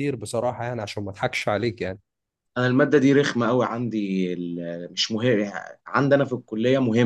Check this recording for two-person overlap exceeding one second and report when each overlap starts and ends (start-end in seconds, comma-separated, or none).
none